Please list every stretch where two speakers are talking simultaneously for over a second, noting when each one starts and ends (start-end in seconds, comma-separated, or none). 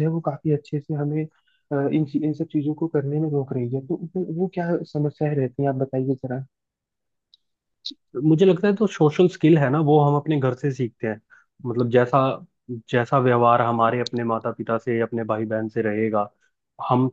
none